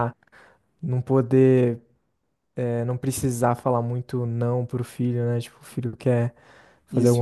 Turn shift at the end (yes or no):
no